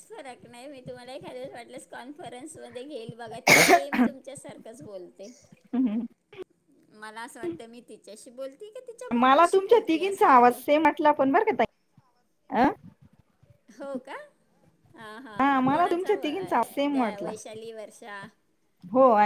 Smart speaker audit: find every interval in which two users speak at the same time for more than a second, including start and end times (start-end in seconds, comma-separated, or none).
9.2-10.6